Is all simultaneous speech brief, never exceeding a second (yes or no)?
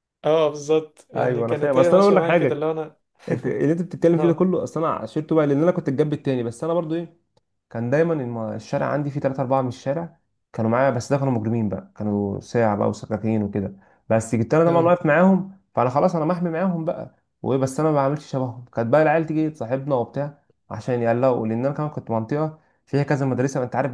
no